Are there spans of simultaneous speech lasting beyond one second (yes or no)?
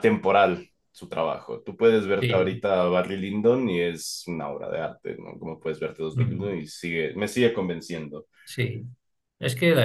no